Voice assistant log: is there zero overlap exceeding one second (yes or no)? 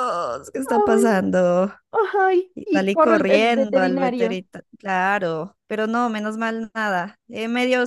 no